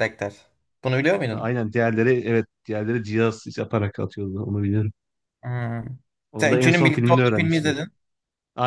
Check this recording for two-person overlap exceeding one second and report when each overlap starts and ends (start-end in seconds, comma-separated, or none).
6.4-7.8